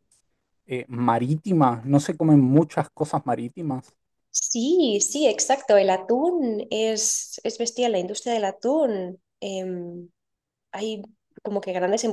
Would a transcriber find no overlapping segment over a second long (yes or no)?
yes